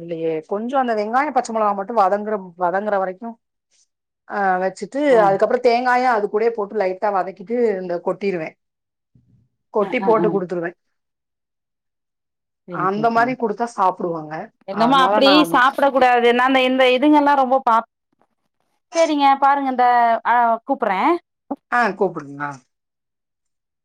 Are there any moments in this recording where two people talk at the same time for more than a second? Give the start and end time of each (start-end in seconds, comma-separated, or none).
none